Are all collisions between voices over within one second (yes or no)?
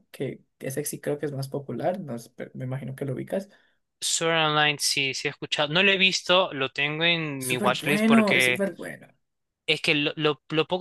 no